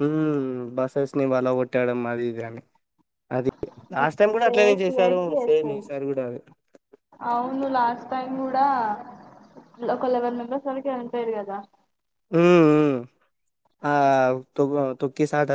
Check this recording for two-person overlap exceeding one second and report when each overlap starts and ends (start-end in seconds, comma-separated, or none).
4.0-5.8